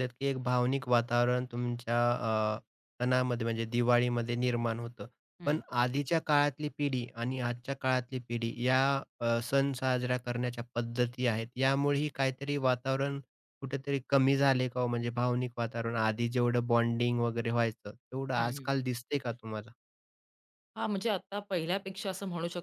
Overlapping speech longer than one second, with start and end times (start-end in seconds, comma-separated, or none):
none